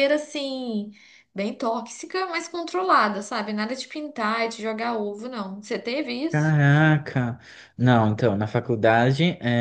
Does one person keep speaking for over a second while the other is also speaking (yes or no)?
no